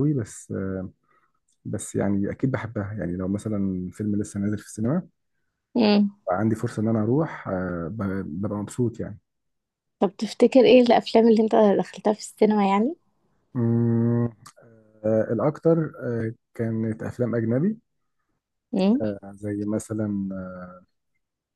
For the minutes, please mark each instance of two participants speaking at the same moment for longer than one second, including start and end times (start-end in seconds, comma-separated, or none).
none